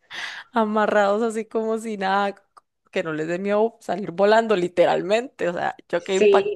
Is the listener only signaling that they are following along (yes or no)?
no